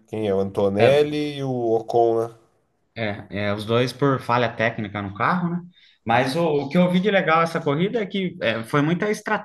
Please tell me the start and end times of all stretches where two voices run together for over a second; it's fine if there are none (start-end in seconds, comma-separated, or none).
none